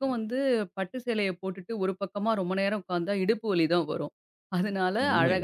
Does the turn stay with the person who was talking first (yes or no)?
yes